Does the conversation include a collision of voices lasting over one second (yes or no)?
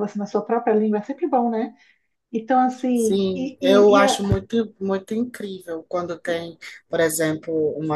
yes